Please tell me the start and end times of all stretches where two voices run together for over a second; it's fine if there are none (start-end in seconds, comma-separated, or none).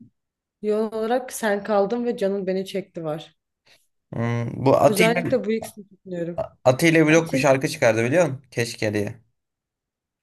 none